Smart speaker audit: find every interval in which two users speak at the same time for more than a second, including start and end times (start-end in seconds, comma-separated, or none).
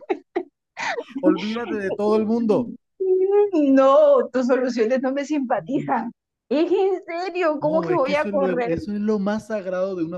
7.6-8.8